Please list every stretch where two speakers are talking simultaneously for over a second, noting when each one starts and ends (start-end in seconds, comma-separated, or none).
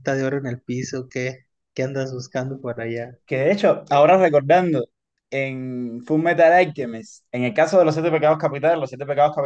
none